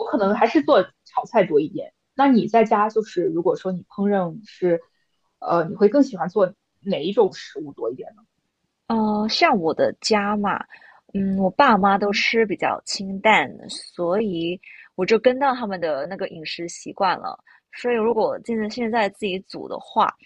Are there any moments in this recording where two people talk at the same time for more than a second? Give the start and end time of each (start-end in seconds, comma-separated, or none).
none